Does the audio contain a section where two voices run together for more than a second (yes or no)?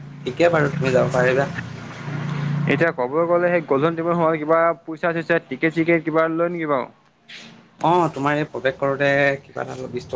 no